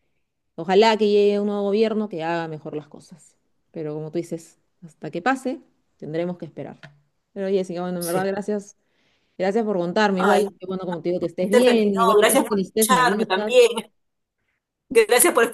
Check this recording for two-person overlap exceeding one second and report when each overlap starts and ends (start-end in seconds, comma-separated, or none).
11.5-13.6